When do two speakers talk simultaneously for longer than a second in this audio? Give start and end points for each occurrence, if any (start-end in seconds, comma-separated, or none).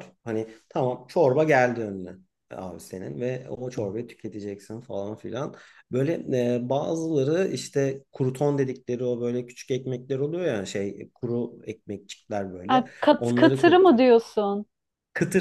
12.7-14.0